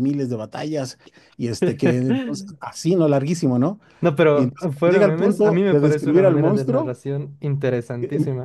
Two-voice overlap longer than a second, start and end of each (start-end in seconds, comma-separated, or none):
4.3-6.9